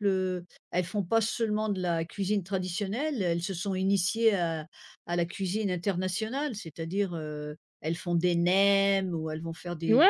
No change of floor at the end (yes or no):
no